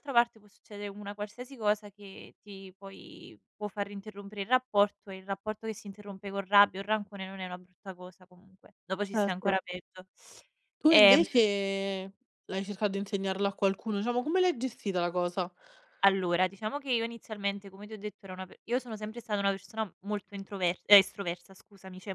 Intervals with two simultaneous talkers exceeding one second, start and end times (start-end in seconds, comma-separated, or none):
none